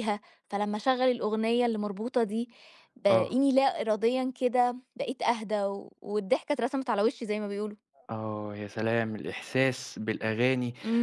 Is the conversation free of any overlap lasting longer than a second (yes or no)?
yes